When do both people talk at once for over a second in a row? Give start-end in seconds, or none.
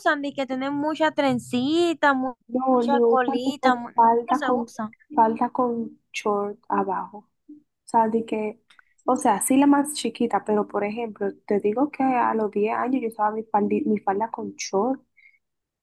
2.7-4.7